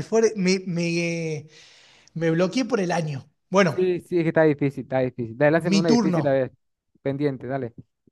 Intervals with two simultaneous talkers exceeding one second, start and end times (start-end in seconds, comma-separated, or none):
none